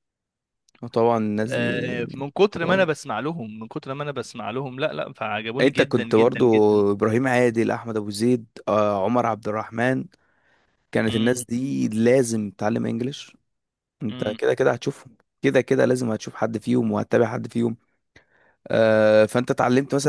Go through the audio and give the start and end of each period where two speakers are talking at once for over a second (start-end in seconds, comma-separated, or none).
5.6-6.8